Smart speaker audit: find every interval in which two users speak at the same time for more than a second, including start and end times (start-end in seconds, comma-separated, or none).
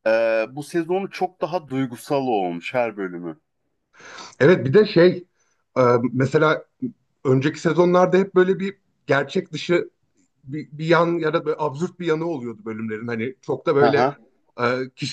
none